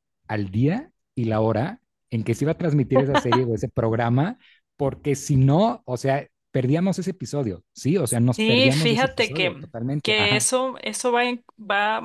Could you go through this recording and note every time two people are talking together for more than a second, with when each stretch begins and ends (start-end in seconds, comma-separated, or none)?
8.4-10.4